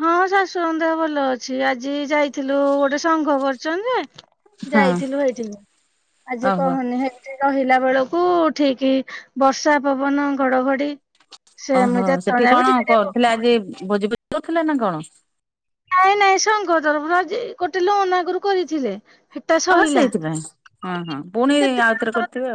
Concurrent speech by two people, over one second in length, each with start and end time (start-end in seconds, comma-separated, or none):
11.8-13.5